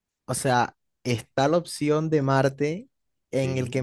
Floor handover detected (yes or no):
no